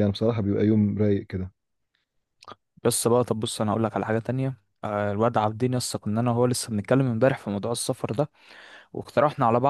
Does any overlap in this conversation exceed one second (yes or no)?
no